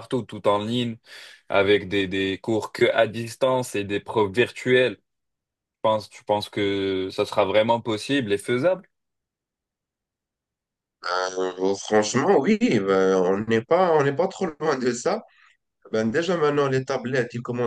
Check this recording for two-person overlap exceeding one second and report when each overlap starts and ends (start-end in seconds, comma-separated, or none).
none